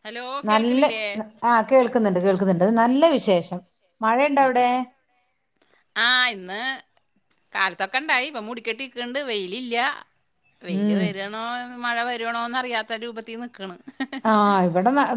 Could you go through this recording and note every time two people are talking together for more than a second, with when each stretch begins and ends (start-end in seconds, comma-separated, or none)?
none